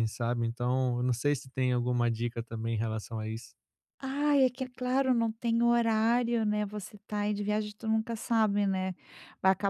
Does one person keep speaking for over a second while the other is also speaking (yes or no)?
no